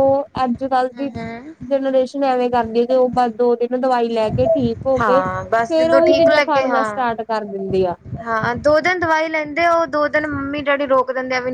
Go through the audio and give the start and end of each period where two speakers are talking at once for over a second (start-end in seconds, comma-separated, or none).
5.0-7.1